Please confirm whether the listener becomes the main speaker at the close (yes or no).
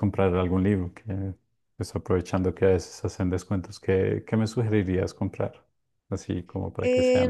yes